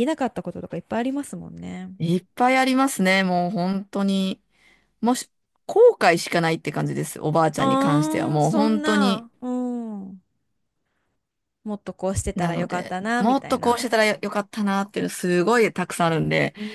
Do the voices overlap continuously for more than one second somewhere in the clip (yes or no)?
yes